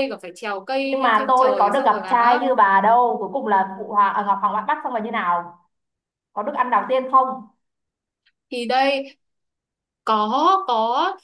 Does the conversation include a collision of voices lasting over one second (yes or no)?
yes